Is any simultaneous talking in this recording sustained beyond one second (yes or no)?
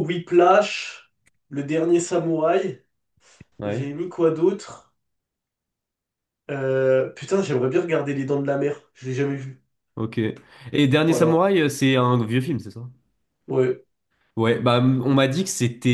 no